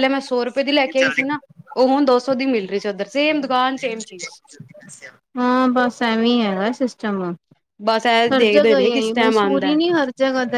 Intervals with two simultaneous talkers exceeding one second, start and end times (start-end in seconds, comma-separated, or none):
8.3-9.7